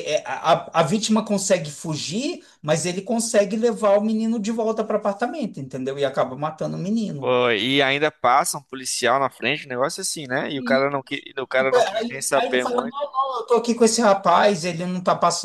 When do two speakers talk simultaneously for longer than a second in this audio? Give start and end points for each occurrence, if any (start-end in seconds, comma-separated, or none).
11.6-13.0